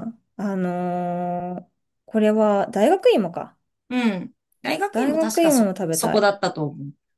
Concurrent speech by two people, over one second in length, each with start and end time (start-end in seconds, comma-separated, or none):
4.9-6.4